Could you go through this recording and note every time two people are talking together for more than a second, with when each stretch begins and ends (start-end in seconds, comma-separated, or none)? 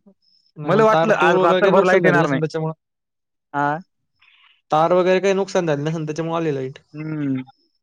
0.7-2.4